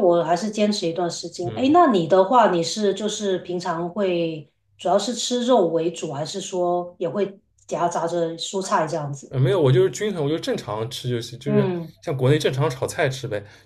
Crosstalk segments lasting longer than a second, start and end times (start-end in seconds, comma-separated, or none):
none